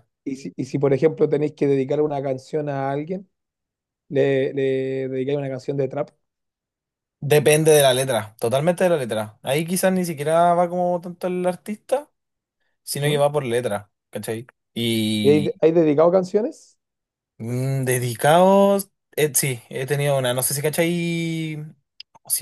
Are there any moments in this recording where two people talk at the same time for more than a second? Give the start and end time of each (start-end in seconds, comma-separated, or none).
none